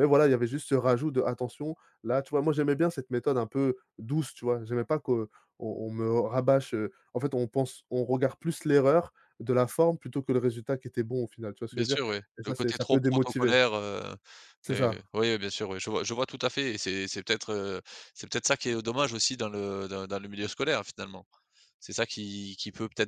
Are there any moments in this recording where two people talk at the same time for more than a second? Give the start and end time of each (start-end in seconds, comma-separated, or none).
11.7-13.6